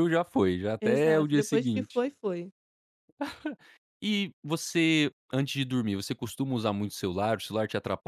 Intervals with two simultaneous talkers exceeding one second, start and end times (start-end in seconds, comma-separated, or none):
0.8-2.0